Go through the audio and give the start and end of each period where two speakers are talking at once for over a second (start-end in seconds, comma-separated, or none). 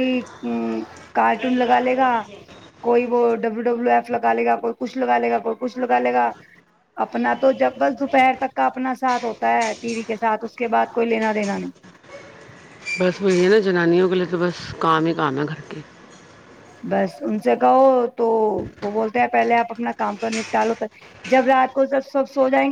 none